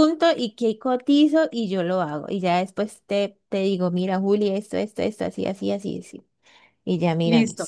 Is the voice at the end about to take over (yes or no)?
yes